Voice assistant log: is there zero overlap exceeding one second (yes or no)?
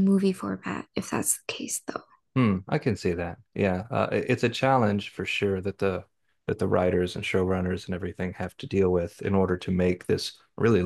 yes